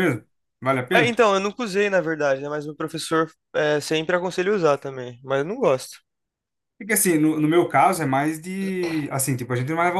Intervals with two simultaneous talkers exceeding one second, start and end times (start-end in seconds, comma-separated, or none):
none